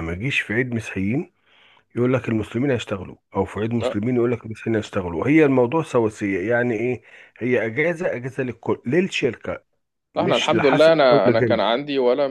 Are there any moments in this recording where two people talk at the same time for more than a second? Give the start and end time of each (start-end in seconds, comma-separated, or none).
10.2-11.6